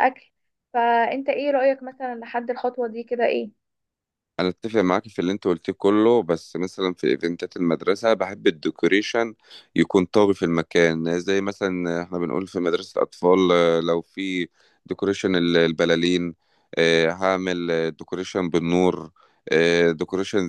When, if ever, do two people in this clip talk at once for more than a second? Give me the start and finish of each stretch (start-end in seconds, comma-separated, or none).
none